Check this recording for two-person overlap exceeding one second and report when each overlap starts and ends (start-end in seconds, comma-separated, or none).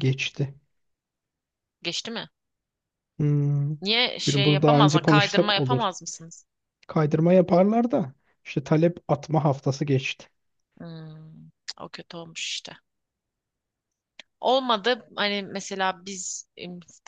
4.3-5.8